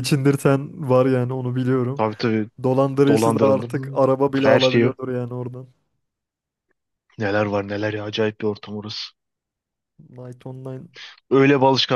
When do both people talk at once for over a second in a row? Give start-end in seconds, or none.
3.1-4.9